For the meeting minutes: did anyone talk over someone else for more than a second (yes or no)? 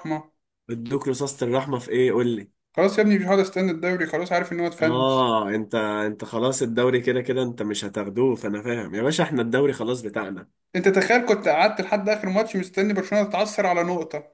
no